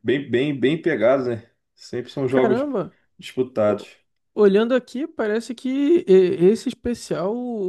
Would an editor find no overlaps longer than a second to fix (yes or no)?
yes